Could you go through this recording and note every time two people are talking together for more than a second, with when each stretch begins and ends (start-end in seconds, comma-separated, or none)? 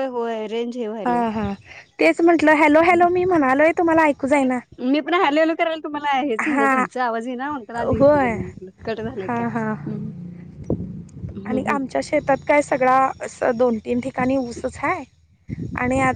none